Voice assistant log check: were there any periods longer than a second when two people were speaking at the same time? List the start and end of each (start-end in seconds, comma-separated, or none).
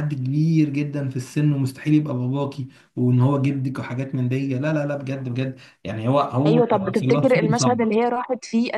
6.5-7.9